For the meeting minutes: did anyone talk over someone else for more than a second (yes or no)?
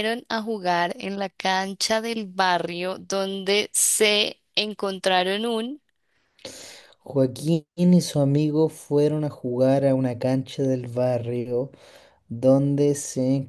no